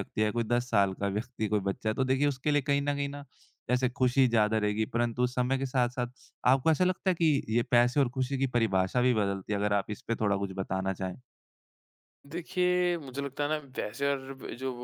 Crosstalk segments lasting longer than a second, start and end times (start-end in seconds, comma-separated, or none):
none